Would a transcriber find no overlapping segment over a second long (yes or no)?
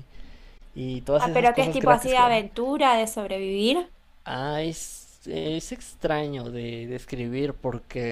no